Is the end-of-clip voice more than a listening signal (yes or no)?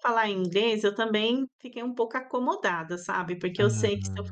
no